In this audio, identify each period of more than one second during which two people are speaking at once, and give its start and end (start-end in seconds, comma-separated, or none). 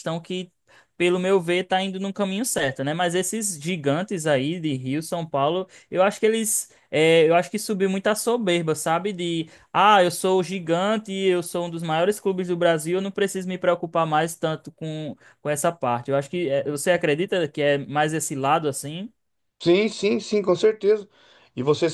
none